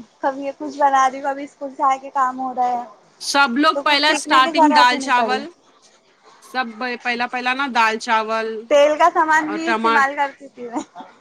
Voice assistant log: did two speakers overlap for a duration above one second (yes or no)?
yes